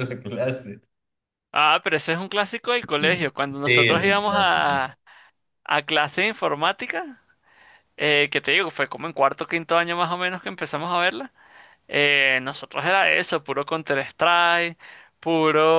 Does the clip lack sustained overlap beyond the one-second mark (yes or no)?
no